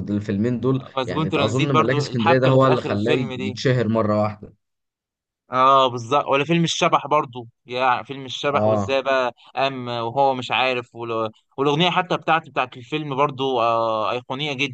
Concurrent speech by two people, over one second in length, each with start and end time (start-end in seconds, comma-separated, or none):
1.0-3.6